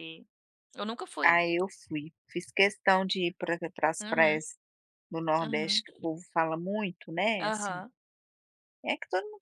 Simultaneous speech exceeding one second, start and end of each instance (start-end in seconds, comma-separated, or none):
none